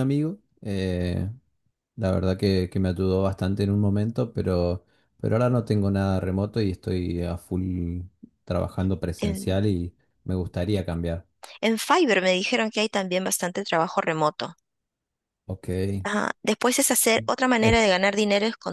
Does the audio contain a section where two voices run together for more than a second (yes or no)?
no